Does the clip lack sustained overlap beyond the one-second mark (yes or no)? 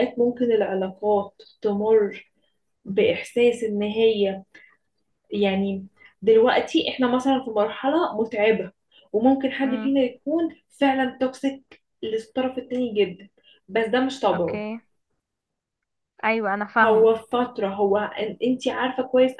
yes